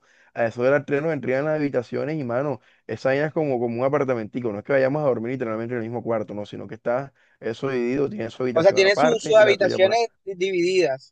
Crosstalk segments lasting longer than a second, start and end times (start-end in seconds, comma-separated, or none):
8.5-10.0